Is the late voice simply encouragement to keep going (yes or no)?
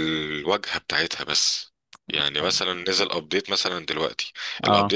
yes